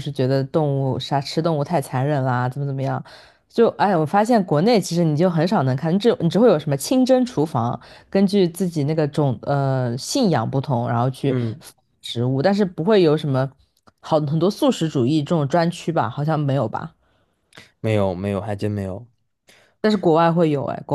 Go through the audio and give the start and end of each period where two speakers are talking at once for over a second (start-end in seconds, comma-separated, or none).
none